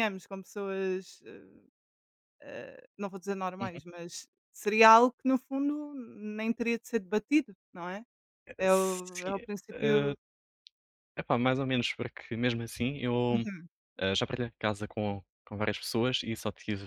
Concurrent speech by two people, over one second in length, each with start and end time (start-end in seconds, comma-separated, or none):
8.6-10.1